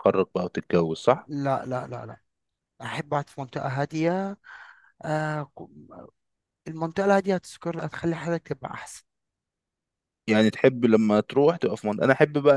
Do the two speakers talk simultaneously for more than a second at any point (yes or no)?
no